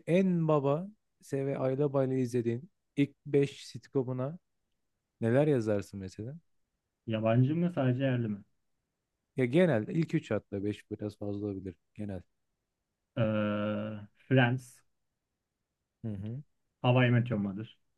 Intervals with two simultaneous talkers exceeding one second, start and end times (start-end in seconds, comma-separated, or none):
none